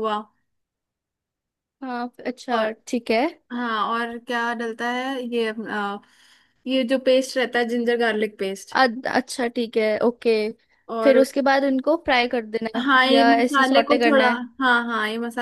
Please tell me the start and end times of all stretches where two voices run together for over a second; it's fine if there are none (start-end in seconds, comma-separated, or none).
12.8-14.4